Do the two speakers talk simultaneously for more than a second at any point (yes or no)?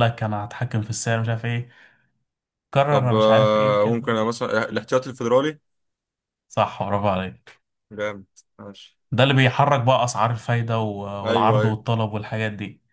yes